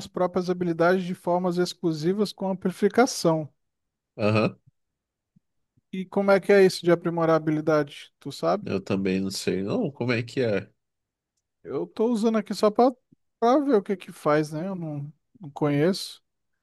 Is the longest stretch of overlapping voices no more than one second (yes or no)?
yes